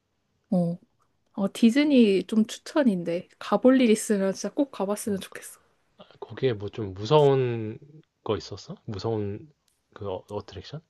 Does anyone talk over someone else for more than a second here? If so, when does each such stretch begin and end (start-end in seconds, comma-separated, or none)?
none